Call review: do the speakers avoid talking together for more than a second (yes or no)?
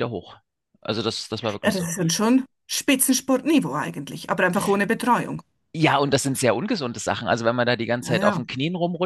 yes